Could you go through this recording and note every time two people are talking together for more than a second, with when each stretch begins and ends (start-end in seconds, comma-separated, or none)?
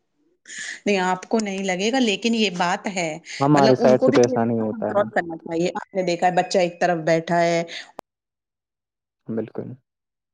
3.5-5.1